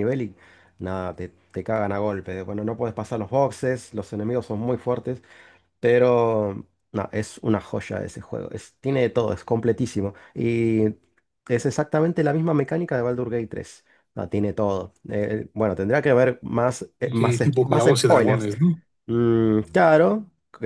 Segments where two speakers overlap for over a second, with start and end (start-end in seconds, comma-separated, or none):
17.0-18.5